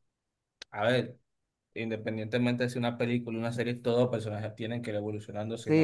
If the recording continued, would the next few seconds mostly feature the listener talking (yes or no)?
yes